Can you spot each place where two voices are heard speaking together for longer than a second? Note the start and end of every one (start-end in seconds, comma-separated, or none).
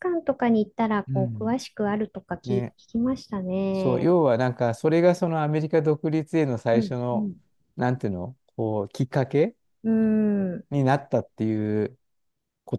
none